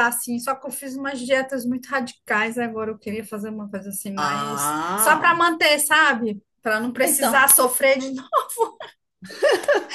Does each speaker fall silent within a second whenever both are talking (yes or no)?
no